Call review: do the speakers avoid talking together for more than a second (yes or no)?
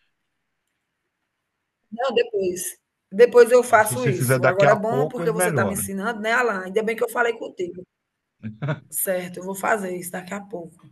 no